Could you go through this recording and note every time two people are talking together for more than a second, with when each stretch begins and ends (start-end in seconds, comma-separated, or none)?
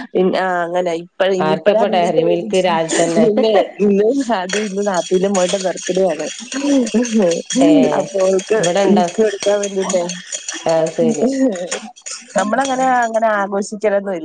1.5-3.2